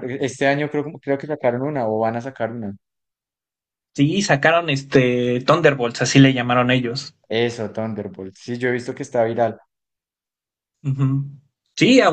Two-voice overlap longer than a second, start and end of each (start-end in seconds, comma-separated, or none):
none